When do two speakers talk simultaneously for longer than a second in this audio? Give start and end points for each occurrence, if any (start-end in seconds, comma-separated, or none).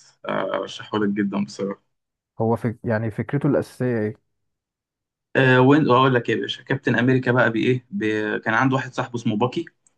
none